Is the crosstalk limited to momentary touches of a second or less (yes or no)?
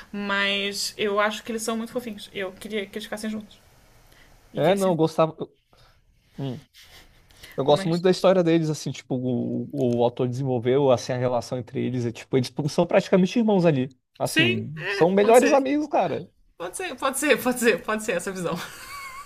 no